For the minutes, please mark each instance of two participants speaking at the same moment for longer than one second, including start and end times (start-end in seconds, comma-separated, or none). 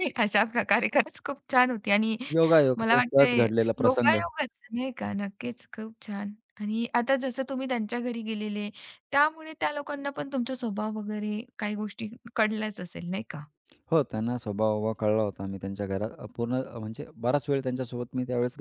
2.8-4.2